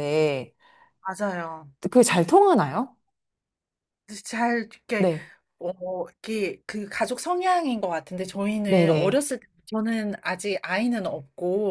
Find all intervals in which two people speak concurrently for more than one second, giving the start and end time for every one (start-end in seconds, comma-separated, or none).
none